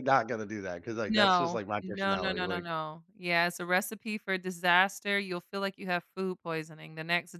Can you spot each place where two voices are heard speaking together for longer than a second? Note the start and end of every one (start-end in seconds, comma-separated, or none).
1.1-2.6